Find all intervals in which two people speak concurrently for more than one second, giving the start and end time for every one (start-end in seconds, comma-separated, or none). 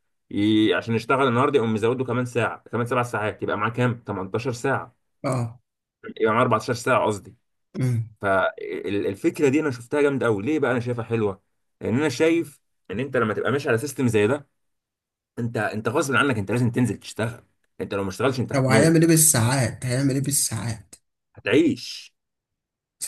none